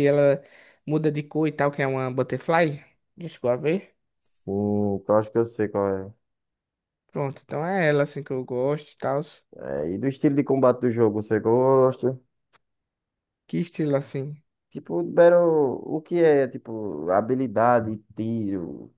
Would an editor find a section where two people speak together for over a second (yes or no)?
no